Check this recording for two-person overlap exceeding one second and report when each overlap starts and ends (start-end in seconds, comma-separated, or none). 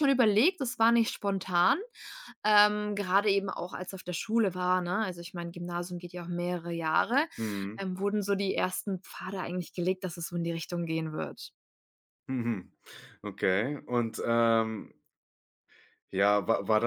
none